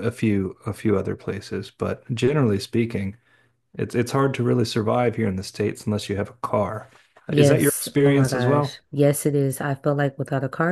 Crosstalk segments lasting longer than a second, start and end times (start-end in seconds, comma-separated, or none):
7.3-8.8